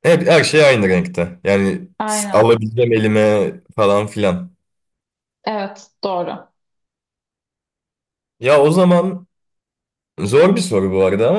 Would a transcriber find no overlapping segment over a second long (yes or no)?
yes